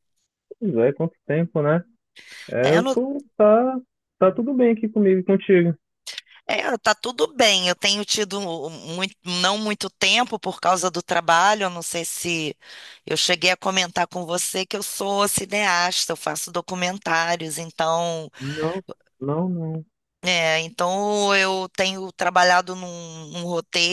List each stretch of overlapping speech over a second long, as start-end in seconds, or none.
none